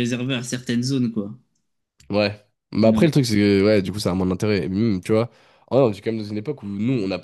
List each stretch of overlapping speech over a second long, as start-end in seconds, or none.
none